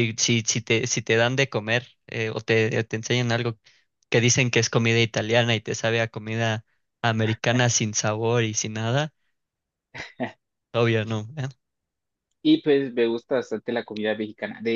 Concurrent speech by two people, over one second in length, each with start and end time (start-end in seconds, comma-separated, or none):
none